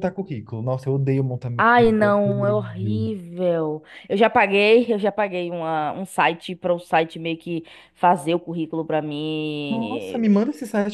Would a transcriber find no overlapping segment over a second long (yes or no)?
no